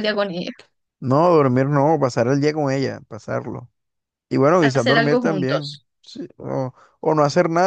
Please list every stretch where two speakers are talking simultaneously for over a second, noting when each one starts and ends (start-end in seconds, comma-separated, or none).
4.6-5.9